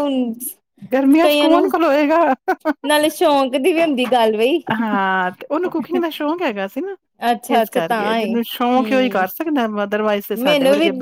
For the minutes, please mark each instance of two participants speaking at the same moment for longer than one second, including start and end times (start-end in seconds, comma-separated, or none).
7.6-9.3